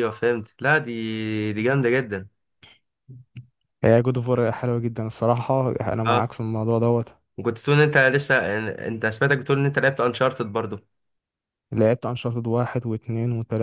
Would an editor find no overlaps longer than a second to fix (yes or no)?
yes